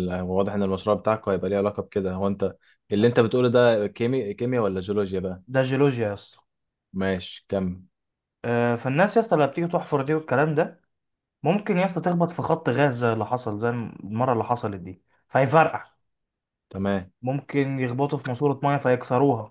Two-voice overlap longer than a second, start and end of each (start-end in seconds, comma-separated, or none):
none